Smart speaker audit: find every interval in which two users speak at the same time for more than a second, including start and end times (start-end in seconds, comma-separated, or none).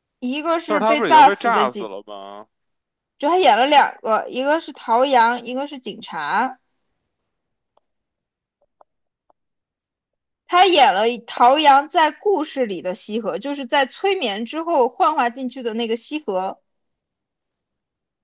0.7-1.9